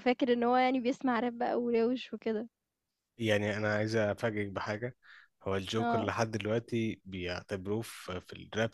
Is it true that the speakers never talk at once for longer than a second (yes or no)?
yes